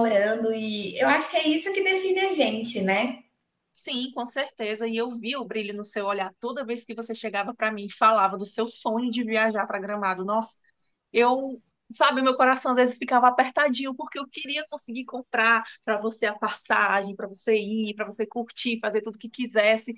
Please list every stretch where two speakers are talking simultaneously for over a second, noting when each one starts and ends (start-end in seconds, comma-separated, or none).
none